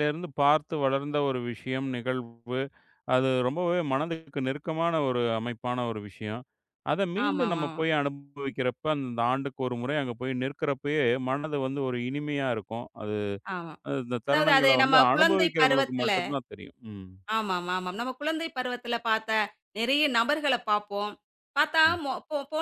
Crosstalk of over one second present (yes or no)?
yes